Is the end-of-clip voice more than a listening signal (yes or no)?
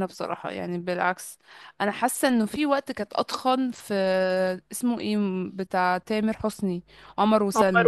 yes